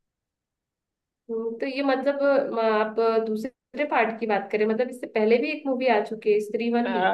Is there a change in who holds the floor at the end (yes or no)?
yes